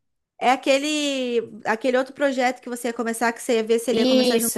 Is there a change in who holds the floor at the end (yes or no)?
yes